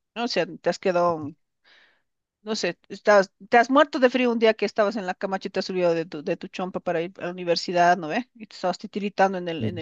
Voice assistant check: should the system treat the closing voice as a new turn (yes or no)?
no